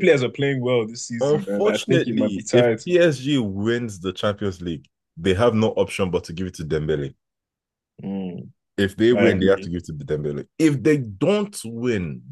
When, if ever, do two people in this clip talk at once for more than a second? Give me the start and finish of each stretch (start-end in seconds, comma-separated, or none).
1.2-2.9